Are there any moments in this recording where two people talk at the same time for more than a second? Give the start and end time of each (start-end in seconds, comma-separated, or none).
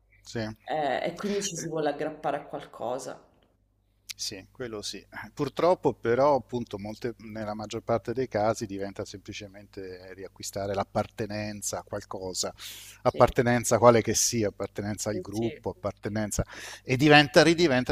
none